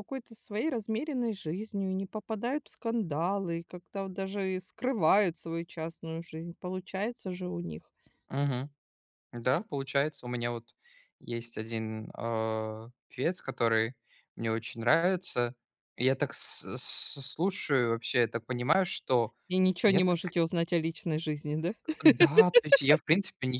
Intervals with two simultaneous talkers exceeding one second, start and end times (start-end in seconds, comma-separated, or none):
none